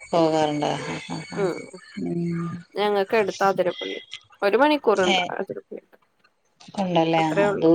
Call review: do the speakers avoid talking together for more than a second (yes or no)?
yes